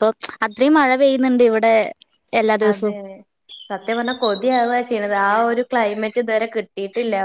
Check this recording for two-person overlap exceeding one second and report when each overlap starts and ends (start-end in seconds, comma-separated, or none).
none